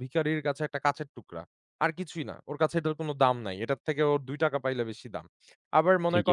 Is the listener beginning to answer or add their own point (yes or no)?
no